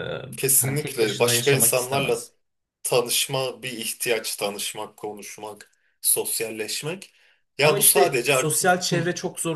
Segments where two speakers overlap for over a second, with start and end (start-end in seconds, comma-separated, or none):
0.6-2.2, 7.6-9.0